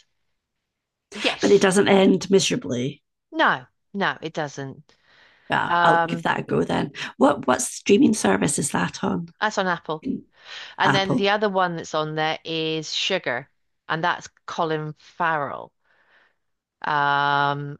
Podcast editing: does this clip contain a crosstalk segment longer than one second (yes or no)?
no